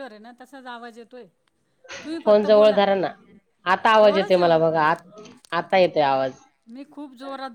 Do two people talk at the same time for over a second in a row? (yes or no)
no